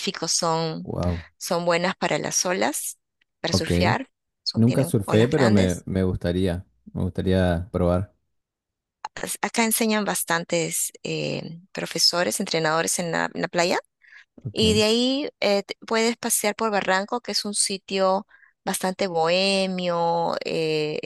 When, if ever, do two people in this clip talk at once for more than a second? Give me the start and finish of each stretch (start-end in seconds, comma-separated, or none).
4.5-5.8